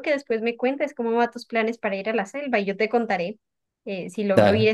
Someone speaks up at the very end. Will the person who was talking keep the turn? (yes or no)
yes